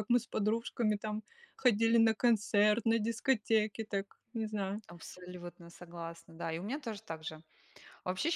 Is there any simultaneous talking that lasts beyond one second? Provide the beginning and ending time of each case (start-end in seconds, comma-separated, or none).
none